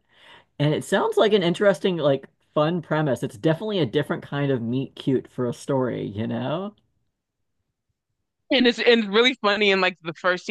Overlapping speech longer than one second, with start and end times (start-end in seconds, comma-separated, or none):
none